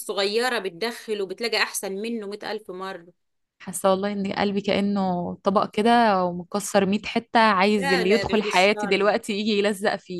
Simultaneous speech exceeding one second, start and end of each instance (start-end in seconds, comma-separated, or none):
7.8-9.1